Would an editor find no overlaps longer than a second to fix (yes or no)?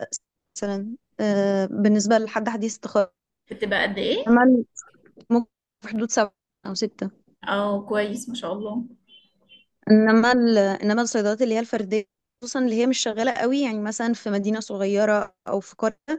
yes